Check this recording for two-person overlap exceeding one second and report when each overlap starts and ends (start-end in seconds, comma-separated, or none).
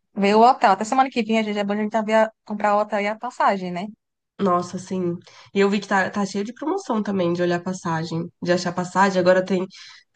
none